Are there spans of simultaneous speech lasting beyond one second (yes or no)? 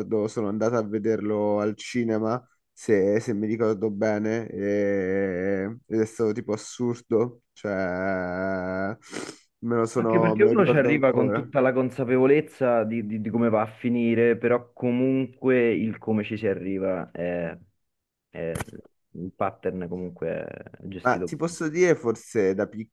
yes